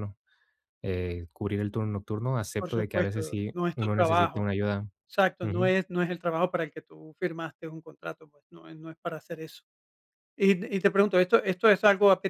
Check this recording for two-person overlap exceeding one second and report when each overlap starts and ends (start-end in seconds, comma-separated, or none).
2.6-4.5